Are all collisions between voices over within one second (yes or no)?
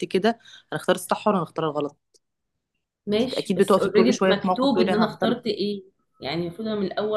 no